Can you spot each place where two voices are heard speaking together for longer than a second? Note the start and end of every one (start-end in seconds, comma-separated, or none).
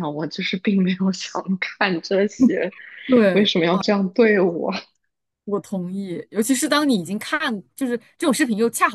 none